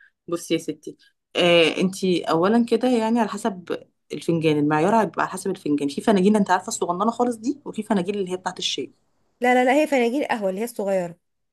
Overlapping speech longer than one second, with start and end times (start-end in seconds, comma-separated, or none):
none